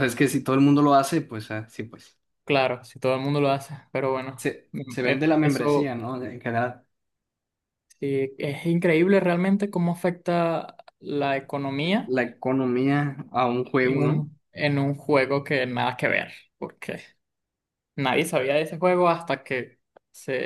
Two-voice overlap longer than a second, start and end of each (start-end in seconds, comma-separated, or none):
4.4-6.0